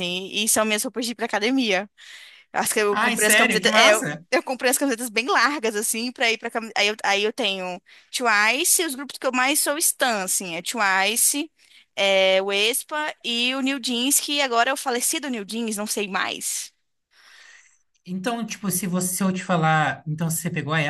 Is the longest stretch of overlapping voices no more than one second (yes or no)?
no